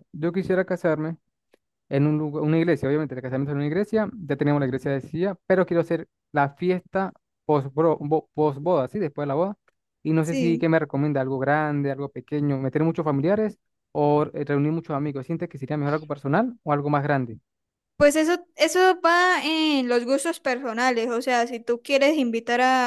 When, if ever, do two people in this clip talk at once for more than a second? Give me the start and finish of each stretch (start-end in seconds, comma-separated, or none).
none